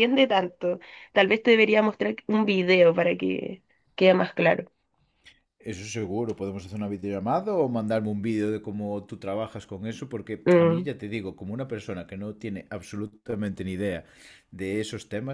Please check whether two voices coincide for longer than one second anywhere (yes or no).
no